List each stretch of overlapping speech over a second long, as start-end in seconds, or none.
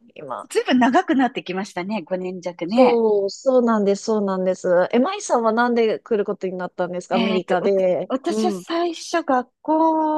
7.1-8.6